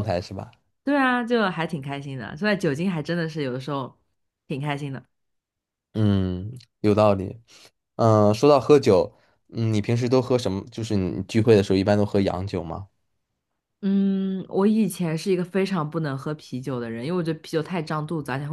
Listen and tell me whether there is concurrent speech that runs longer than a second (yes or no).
no